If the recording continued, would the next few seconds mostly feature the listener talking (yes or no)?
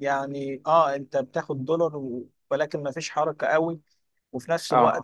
no